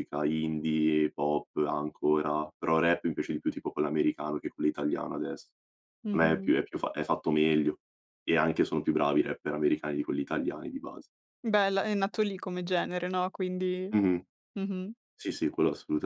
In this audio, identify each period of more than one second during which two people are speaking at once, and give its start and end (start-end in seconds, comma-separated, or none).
none